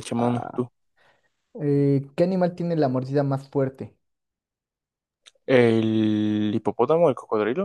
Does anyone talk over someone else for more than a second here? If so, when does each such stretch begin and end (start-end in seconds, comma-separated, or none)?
none